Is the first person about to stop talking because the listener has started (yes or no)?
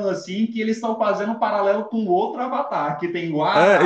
yes